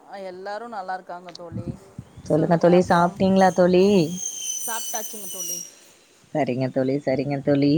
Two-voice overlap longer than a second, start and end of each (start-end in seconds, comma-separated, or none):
none